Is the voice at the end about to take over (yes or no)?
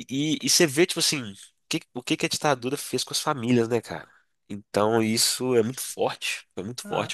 yes